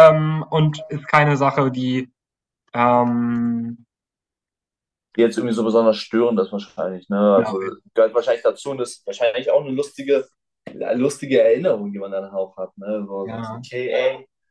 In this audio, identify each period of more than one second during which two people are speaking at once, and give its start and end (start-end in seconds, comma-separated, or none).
none